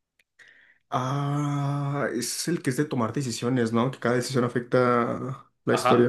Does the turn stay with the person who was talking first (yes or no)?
no